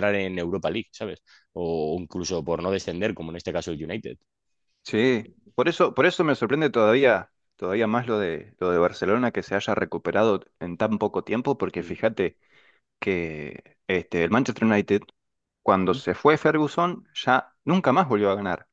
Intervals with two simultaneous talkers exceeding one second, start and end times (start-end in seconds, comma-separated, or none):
none